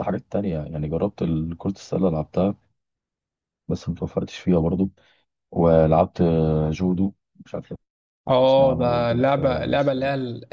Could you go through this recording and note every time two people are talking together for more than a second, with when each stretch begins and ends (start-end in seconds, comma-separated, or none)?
8.4-10.0